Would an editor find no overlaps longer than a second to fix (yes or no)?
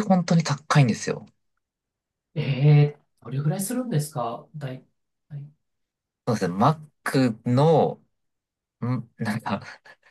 yes